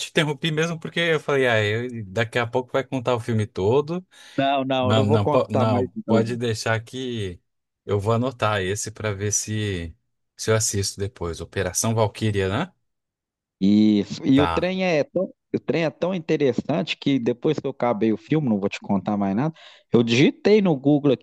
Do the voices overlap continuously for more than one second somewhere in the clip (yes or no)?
yes